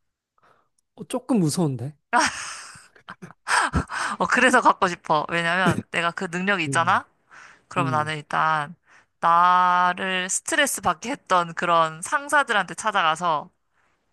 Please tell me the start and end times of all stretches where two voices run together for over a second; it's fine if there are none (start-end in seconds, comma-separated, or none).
none